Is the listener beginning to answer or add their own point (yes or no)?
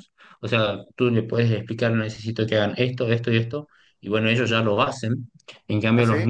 no